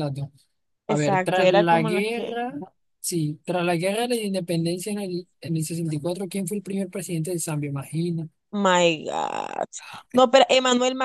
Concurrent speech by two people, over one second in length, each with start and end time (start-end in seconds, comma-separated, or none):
0.9-2.3